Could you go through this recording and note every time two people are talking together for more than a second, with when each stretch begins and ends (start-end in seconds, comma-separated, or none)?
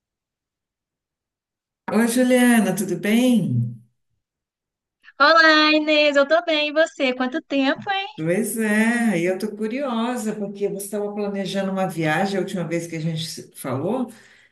none